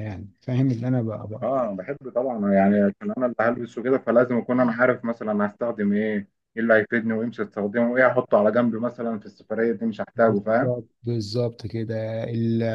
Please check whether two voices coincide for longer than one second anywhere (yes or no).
no